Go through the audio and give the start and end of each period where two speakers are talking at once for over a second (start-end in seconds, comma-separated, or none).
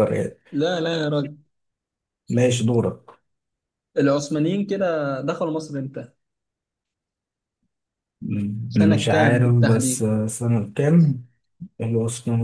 8.7-10.1